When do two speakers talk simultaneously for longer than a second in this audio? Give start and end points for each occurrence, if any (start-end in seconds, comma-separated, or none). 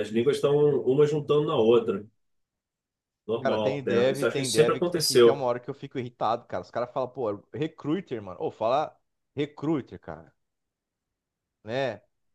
3.4-5.4